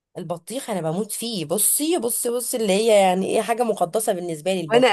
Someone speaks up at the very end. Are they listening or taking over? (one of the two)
taking over